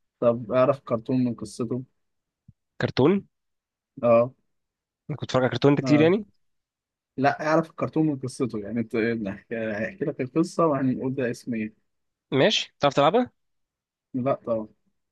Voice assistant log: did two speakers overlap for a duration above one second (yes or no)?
no